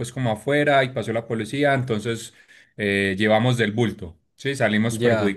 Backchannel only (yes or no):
no